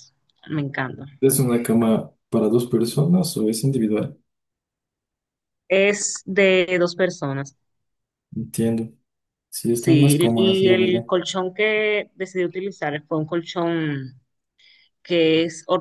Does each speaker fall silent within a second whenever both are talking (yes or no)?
no